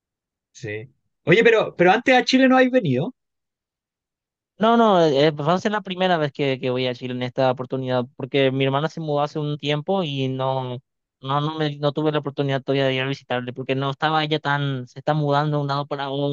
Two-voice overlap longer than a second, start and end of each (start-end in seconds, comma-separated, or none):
none